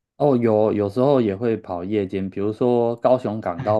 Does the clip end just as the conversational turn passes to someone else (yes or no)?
no